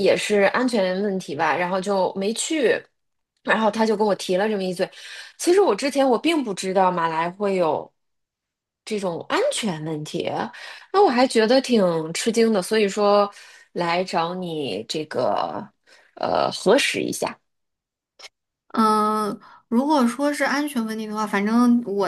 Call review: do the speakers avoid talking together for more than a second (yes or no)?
yes